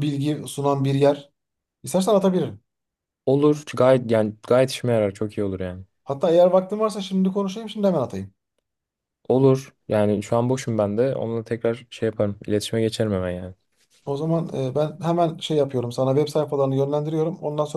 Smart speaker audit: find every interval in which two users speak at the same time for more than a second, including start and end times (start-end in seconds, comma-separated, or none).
none